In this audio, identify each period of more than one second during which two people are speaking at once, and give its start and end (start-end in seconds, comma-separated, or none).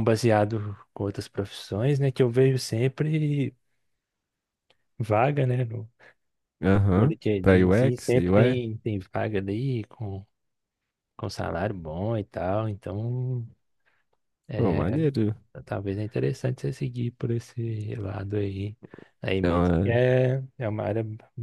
6.9-8.6